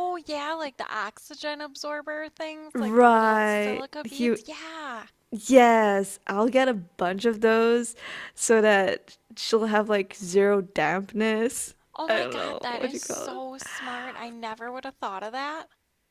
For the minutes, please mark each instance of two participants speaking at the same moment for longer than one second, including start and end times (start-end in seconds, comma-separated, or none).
2.8-4.4, 11.9-13.4